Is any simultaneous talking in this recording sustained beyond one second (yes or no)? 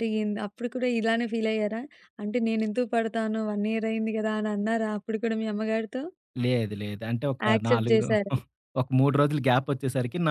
no